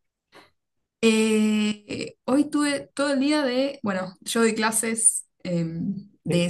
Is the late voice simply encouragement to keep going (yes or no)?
yes